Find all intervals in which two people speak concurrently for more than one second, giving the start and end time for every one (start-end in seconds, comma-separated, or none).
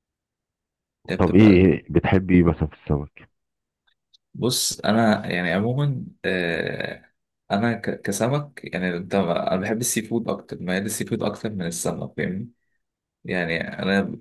none